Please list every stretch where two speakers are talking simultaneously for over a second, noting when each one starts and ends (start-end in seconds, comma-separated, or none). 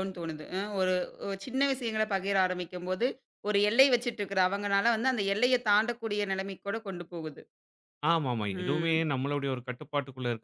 none